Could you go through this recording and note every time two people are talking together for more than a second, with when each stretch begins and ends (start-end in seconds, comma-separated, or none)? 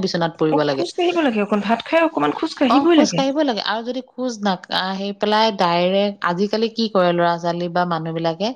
none